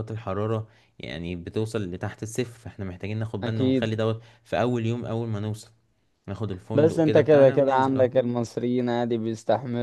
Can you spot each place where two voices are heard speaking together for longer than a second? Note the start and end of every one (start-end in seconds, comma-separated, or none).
6.7-8.1